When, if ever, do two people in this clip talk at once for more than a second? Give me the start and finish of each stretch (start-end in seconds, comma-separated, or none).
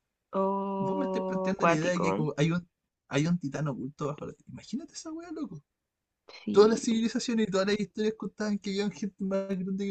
0.8-2.3